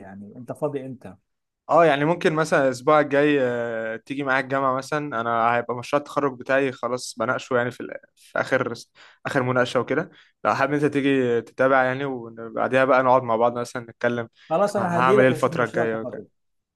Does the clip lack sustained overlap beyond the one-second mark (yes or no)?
no